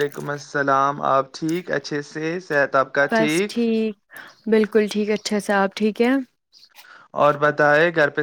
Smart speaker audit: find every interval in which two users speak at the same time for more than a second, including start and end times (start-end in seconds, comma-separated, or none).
none